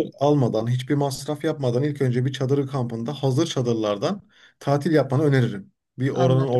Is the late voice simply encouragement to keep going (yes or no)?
yes